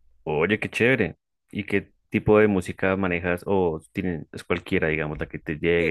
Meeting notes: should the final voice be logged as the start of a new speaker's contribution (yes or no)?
yes